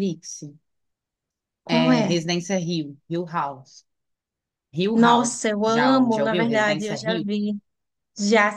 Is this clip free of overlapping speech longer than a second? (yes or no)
no